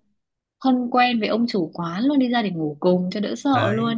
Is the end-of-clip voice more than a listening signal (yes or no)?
yes